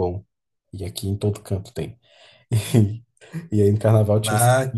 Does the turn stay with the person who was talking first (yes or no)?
yes